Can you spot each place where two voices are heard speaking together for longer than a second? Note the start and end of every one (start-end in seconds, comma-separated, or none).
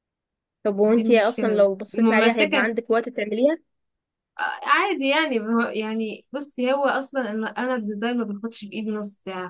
0.9-2.7